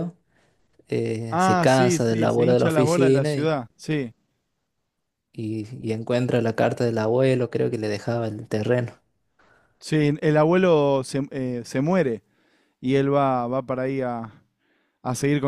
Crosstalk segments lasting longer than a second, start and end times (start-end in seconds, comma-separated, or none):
1.3-3.6